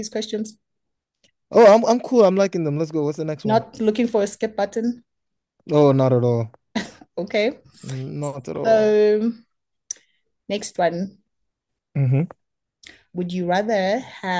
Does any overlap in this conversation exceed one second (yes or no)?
no